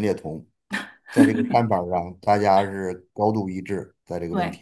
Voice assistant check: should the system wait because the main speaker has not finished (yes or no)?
no